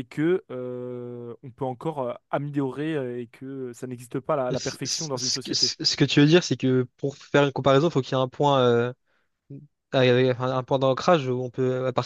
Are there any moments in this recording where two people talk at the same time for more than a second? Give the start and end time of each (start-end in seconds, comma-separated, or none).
4.5-5.7